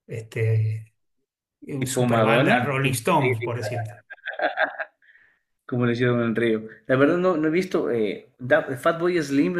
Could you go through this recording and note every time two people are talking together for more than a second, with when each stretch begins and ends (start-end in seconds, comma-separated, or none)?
1.8-3.5